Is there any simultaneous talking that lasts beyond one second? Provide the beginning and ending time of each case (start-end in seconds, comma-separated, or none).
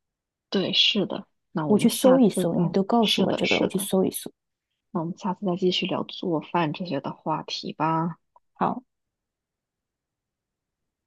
1.7-3.9